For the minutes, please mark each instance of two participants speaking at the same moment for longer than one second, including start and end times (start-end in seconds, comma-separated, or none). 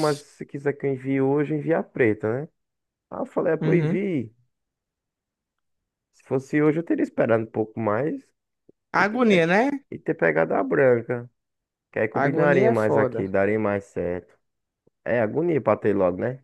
12.1-13.3